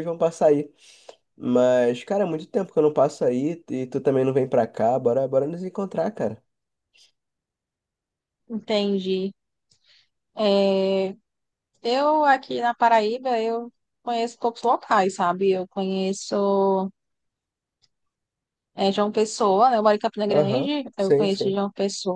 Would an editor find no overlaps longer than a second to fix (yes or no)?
no